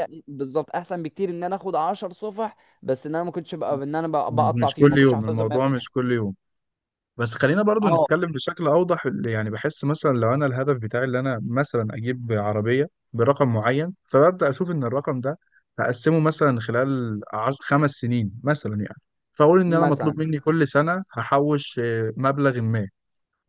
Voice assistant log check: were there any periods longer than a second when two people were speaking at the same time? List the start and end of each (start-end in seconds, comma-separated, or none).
4.3-6.0